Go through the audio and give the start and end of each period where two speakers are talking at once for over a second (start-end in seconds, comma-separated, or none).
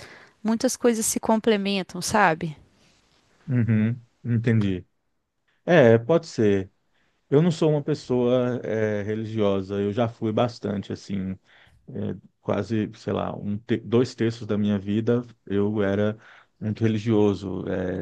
none